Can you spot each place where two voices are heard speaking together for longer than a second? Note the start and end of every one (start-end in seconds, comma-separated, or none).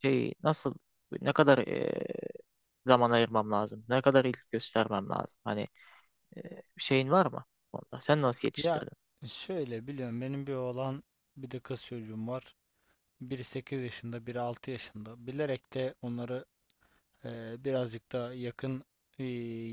none